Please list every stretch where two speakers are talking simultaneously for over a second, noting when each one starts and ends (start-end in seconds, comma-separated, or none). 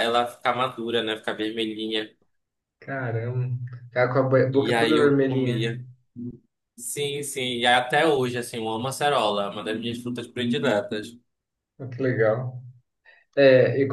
4.5-5.7